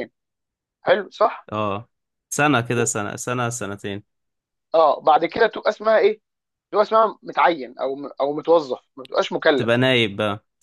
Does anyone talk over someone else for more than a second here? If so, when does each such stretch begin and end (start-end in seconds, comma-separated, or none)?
none